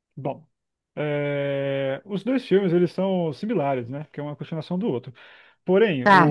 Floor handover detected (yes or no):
no